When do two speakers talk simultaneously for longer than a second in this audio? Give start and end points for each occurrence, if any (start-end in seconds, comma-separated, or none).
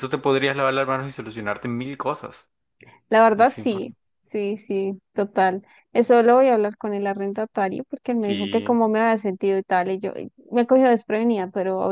none